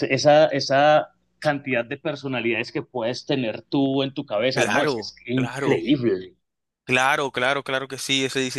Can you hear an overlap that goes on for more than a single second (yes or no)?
yes